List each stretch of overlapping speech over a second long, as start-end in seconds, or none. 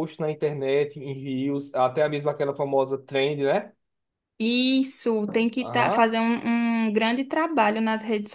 none